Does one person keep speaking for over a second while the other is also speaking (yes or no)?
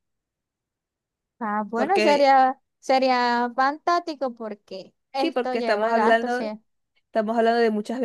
yes